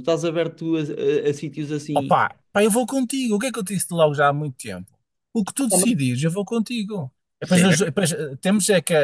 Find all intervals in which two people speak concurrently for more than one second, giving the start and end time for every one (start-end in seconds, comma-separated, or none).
none